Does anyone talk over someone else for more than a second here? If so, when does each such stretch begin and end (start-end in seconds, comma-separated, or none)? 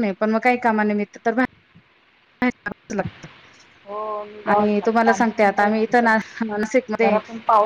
4.5-6.2